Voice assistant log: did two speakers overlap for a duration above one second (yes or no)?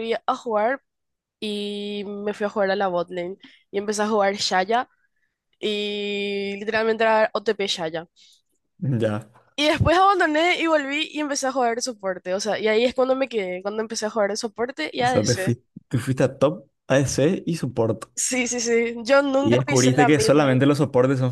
yes